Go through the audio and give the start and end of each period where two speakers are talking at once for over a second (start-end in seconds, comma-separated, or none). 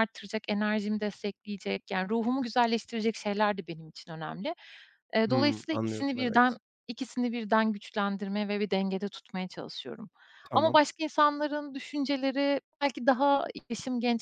5.3-6.6